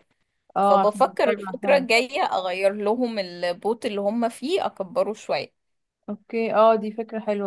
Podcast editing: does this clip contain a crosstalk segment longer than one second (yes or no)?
yes